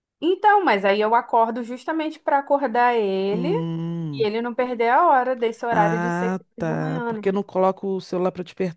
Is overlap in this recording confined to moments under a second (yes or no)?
no